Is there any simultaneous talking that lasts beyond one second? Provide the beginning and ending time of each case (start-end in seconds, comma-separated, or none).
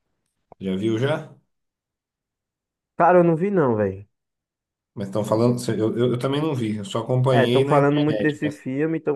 7.3-8.6